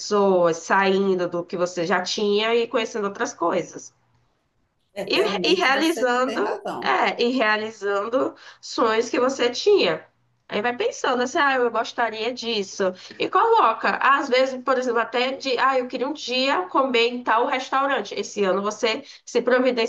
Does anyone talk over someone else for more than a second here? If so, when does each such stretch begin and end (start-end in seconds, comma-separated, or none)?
5.1-6.9